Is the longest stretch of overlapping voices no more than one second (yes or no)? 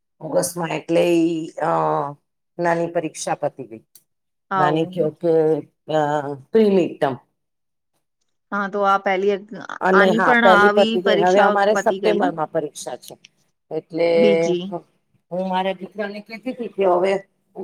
no